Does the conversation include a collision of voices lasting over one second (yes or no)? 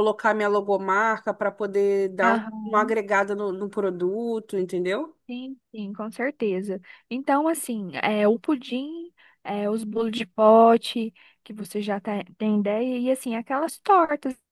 no